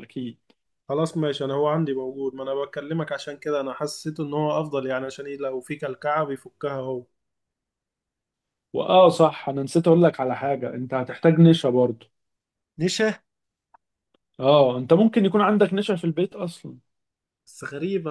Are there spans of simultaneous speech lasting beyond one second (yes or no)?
no